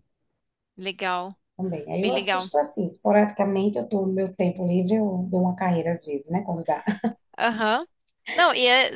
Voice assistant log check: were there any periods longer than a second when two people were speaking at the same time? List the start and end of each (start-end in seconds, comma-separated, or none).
none